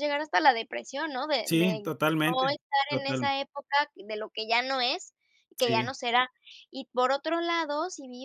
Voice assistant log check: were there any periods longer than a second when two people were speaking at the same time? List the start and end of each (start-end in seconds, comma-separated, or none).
1.5-3.3